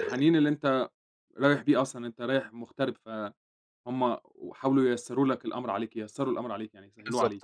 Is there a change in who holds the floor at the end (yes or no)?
yes